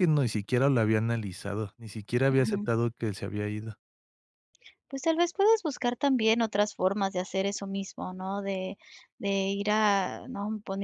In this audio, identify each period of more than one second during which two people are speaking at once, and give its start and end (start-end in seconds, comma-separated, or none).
none